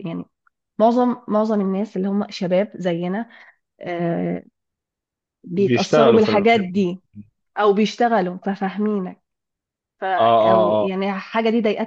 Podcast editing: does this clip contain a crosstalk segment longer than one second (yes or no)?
yes